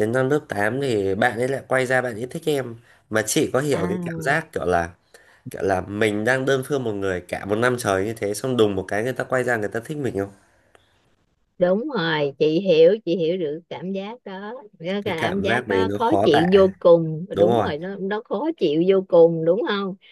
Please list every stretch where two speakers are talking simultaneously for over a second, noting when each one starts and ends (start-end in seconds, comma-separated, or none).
15.1-16.5